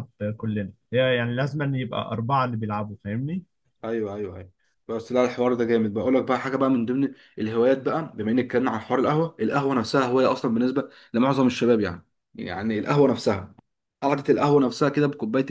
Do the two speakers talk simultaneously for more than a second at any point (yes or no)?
no